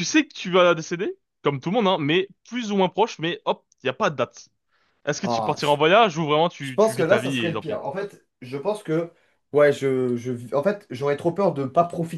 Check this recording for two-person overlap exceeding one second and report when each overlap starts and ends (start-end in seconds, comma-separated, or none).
6.6-7.8